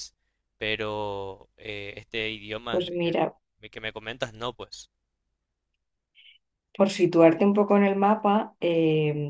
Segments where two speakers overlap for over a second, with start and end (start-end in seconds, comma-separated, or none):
none